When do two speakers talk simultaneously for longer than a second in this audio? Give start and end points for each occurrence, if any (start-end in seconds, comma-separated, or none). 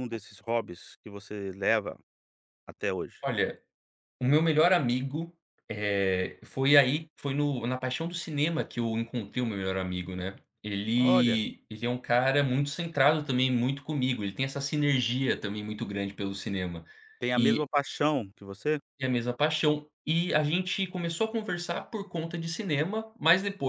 none